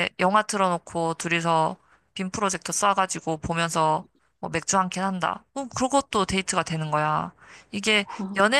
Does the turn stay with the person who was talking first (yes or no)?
yes